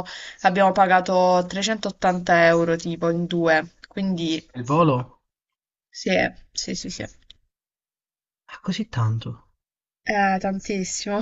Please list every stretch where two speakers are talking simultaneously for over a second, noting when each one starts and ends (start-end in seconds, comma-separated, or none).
none